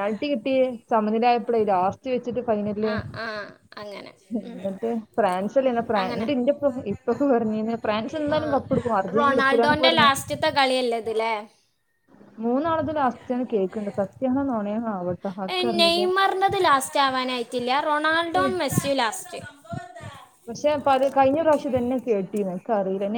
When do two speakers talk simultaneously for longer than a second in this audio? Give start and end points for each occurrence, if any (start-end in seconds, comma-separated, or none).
none